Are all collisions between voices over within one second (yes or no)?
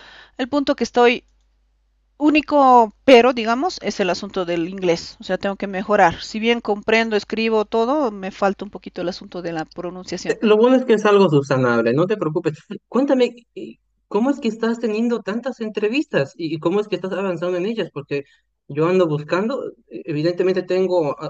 yes